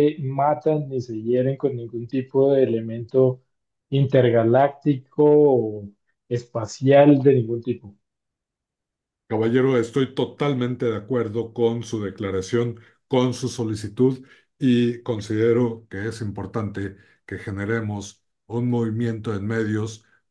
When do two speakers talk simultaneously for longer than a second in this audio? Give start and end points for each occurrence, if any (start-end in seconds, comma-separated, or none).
none